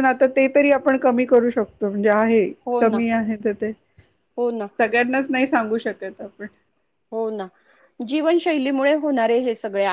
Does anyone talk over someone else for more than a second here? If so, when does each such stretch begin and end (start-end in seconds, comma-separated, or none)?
none